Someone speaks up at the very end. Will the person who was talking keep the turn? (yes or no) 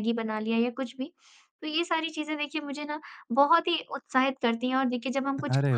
yes